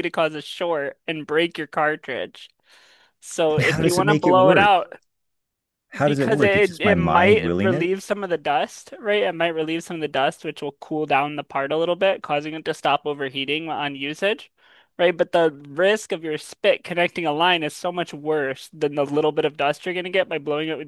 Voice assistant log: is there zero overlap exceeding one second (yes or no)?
no